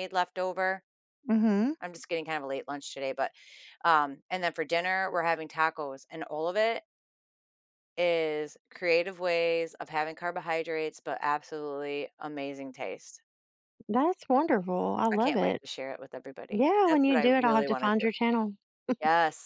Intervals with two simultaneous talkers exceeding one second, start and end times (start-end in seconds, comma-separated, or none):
16.5-18.1